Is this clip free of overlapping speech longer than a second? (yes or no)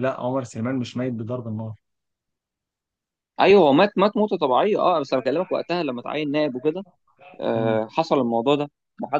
yes